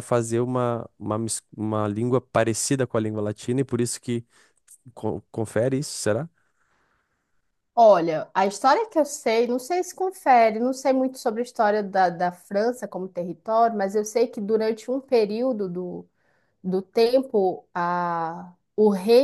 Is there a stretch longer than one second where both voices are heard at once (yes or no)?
no